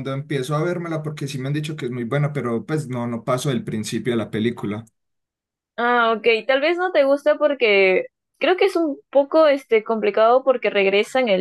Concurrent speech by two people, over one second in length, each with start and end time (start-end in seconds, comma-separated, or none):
none